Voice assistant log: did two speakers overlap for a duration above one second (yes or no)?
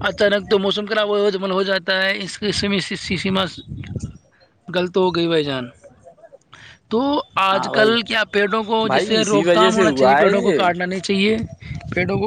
yes